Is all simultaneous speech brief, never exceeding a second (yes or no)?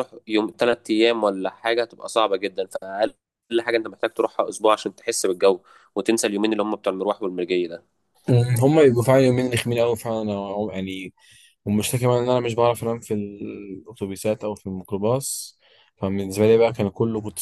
yes